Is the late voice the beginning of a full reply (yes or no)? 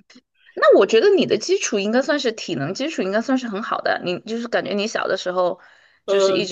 yes